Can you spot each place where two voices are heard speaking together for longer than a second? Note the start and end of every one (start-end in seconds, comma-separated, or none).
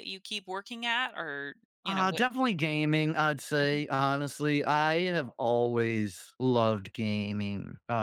none